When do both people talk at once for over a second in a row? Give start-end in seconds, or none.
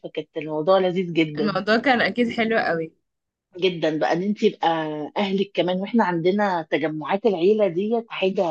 none